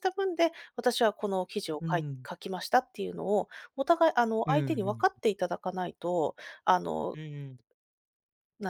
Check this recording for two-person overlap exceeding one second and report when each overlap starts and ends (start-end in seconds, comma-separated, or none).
none